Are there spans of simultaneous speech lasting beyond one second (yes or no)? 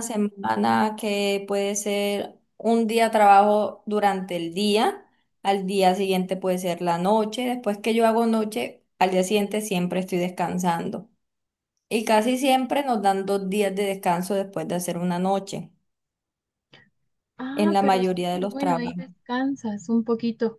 yes